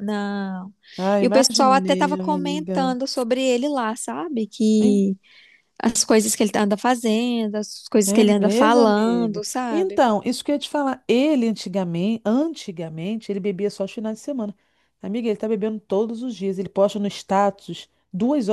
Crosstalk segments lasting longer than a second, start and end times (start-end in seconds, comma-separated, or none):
1.2-3.0, 8.1-10.0